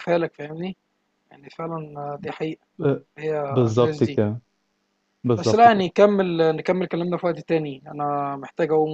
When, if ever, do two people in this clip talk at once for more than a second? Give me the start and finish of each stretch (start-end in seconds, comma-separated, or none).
none